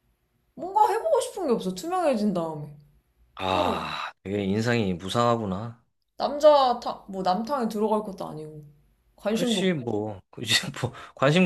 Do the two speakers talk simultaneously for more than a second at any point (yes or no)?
no